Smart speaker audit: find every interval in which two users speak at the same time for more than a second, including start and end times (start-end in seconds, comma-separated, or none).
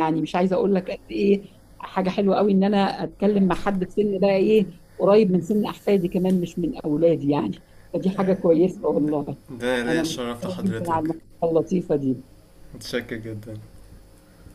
9.9-11.1